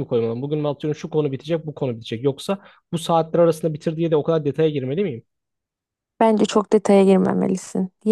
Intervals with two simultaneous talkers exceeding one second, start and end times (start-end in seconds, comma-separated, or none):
none